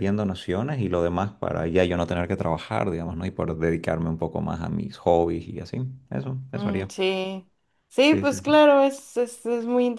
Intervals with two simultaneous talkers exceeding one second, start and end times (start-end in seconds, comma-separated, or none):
none